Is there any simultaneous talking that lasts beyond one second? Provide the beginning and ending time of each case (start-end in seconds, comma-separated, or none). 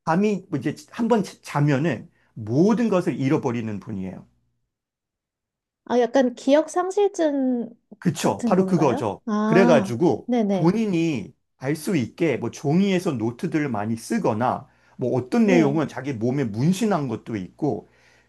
8.2-10.8